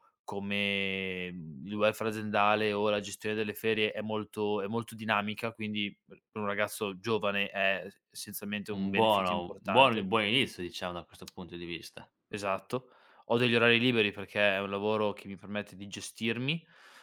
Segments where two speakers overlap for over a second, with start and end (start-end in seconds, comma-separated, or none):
8.8-10.1